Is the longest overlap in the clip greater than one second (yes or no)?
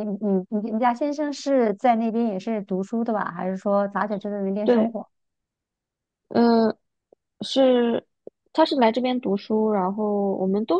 no